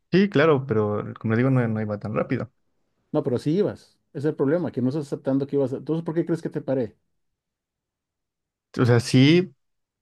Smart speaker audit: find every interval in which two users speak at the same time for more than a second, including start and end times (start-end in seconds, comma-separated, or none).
none